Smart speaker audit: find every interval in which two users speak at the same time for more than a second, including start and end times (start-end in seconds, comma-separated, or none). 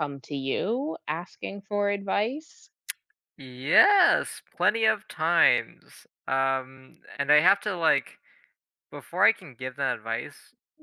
none